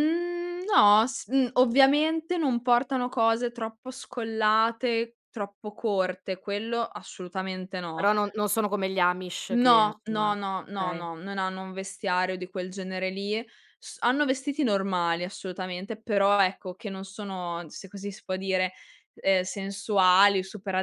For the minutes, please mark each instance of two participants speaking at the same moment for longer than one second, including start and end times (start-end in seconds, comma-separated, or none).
9.5-11.1